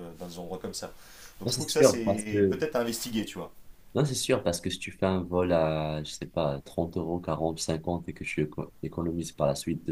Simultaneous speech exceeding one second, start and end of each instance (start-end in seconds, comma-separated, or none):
1.4-2.6